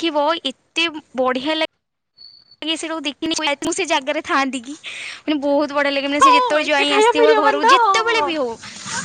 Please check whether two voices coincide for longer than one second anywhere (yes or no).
yes